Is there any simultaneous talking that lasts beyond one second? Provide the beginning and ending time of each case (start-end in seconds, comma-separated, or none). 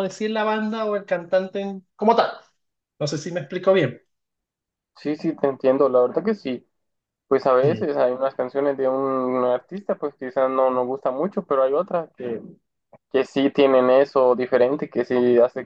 none